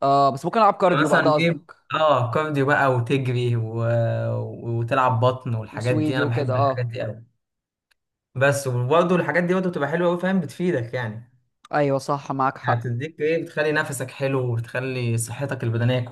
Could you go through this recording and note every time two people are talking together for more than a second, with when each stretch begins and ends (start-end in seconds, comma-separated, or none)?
5.7-6.9